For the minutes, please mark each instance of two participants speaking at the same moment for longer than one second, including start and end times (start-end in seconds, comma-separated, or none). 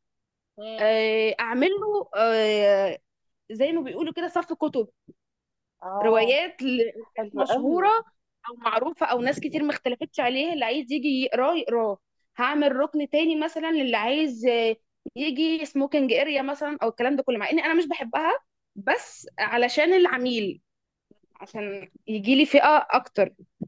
none